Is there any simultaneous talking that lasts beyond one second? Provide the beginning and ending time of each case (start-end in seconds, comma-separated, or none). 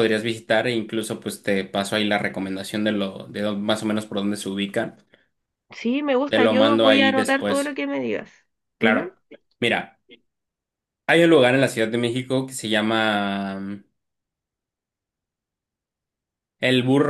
6.3-7.8